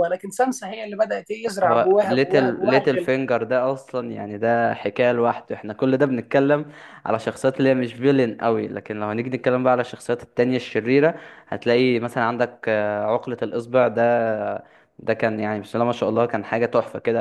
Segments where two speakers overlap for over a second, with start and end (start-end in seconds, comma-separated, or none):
1.6-3.1